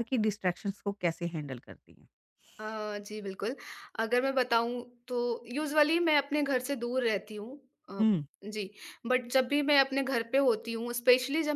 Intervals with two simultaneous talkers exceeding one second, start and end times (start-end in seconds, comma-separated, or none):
none